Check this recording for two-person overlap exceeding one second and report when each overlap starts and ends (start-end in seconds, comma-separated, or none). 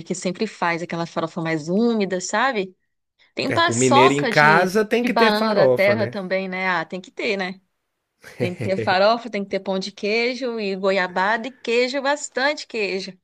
3.5-6.1